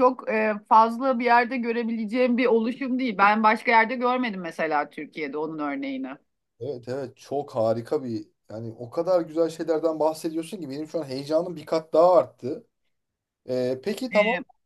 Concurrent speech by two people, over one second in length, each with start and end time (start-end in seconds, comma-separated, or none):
none